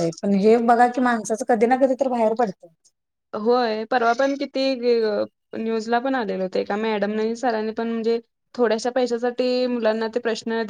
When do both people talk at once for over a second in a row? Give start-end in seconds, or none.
none